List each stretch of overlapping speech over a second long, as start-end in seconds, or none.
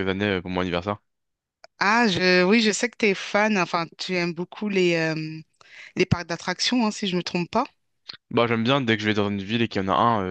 none